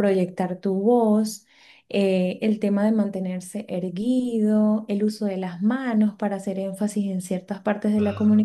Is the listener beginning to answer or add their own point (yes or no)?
no